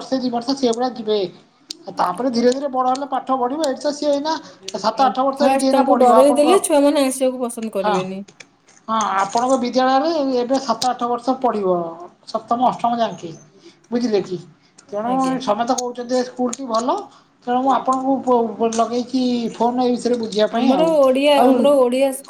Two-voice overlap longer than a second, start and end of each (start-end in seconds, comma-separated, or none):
5.0-6.5